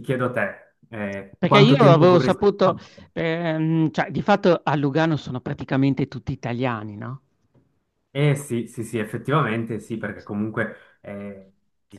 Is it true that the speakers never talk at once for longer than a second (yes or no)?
no